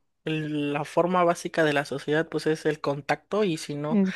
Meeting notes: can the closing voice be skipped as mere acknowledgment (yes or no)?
yes